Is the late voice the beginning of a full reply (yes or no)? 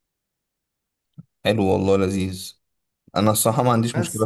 no